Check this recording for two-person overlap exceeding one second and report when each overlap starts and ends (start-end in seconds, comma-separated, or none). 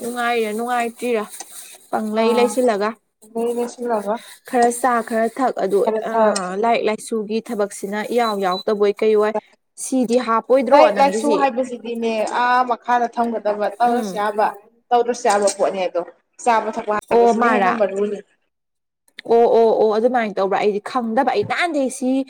none